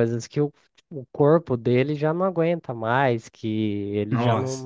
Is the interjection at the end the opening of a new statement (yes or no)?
no